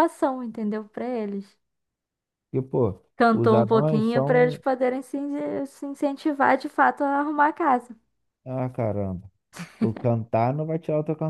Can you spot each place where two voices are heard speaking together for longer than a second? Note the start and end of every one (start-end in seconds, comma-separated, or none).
3.2-4.6